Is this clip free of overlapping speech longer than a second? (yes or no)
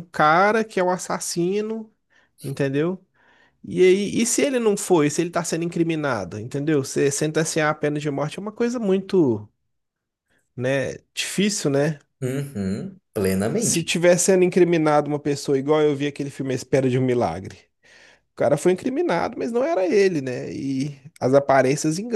yes